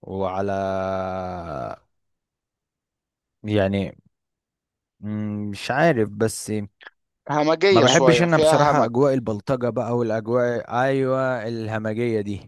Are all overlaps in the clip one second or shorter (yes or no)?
no